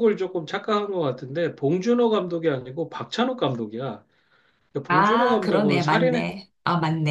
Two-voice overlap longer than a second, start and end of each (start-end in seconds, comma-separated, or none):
4.9-6.3